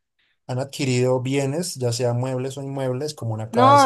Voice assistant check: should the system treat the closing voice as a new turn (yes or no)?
yes